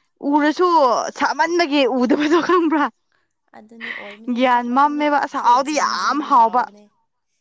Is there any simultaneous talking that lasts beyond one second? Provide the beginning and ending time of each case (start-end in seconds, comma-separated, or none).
4.4-6.6